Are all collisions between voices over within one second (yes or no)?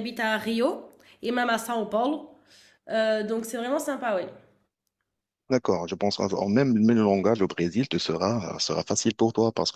yes